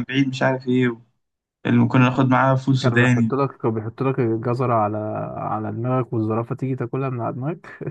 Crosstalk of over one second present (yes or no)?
no